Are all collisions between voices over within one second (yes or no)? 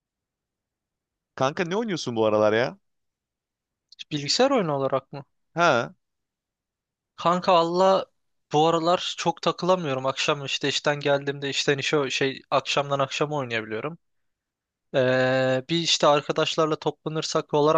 yes